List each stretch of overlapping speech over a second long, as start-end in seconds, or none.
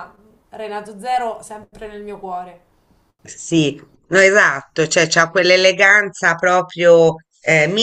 none